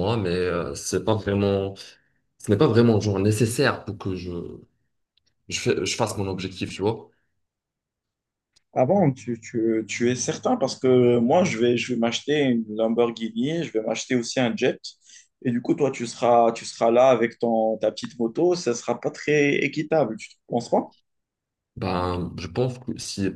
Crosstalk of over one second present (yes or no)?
no